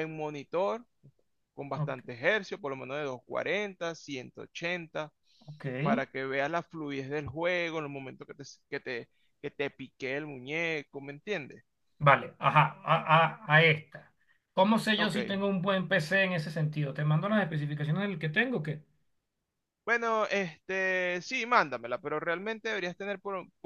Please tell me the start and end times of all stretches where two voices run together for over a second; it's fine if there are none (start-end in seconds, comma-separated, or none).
none